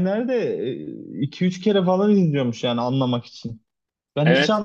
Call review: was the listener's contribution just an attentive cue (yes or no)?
yes